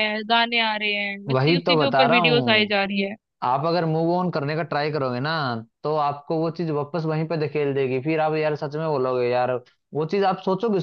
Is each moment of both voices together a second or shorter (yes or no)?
no